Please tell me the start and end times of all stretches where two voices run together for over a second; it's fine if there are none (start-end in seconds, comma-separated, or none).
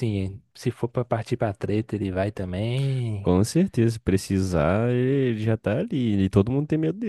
none